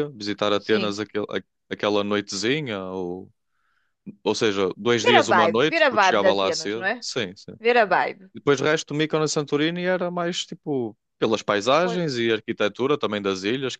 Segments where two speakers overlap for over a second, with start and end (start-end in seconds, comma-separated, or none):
5.0-7.1